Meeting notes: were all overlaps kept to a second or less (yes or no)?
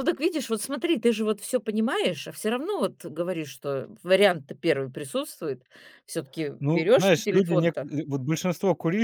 no